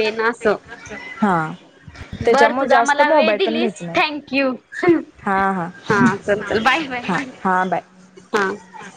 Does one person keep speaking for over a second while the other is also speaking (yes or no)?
yes